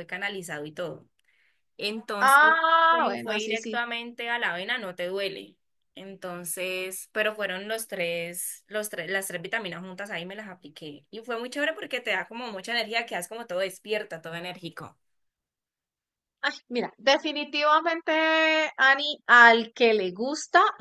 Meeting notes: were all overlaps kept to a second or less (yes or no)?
no